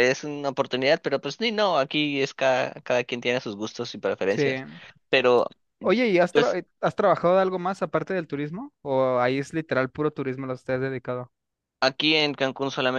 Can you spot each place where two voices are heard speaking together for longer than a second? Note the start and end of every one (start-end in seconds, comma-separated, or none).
none